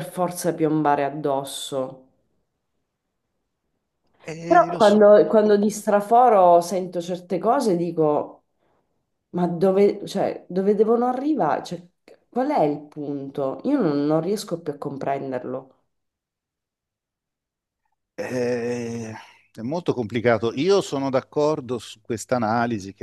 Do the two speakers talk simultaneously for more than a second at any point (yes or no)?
yes